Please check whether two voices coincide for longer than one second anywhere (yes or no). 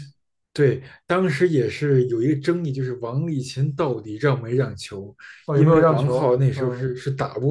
yes